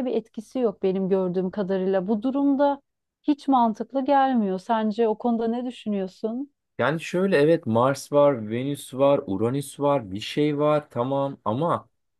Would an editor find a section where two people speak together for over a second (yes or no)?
no